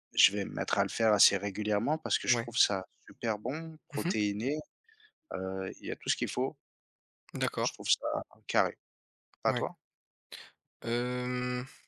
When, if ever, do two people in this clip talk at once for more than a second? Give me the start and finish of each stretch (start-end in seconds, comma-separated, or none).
none